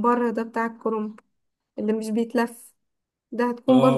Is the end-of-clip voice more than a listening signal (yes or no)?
no